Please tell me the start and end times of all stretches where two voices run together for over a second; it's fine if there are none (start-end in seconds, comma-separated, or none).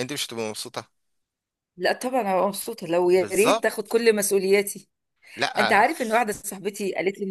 none